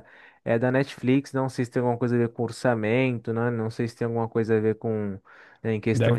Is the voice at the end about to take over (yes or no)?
no